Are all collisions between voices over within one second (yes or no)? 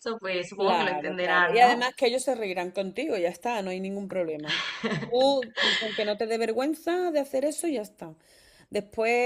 no